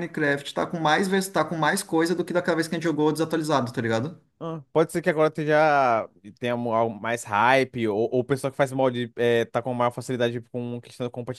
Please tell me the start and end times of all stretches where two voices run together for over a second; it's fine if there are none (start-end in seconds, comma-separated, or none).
none